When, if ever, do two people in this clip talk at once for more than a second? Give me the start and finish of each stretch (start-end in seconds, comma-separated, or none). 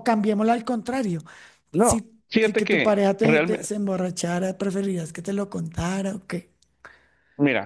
1.8-3.7